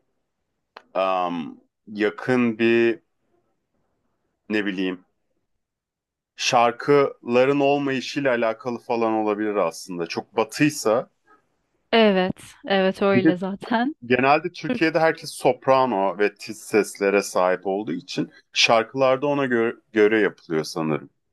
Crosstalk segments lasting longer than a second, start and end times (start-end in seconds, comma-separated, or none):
none